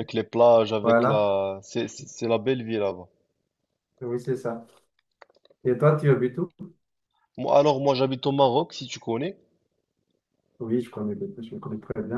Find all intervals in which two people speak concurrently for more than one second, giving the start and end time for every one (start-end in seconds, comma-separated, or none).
none